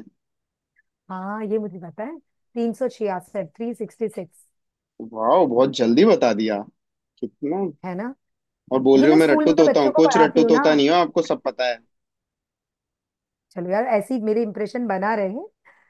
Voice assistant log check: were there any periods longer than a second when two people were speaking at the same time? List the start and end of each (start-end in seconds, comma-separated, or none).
9.0-10.6